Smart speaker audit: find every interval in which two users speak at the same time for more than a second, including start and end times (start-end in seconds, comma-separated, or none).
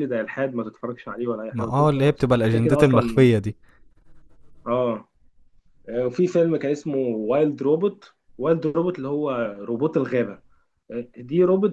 1.5-3.3